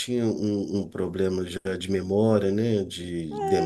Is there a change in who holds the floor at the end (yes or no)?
yes